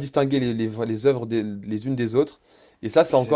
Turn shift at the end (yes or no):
no